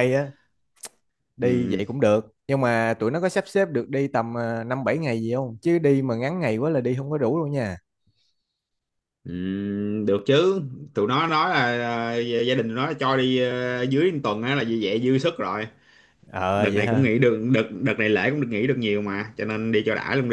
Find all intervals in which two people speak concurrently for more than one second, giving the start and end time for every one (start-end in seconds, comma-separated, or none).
none